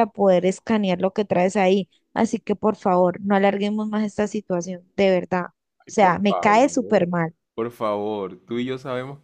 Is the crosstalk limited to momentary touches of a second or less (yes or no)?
no